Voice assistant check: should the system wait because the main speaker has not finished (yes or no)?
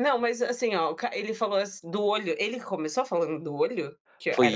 no